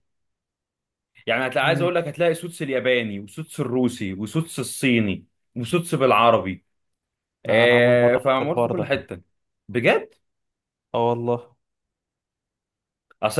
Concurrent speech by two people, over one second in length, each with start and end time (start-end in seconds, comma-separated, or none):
7.5-8.9